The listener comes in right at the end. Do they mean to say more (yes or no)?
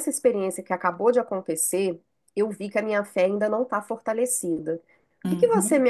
no